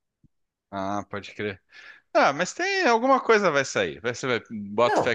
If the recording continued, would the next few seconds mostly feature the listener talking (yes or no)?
no